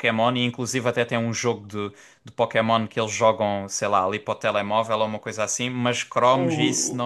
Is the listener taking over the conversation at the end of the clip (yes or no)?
no